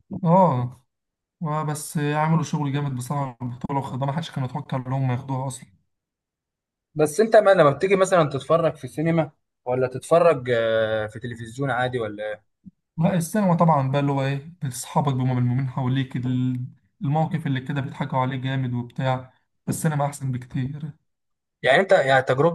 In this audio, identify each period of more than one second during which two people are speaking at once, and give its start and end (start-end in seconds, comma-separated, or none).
none